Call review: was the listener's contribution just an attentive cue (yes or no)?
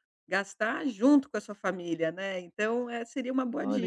no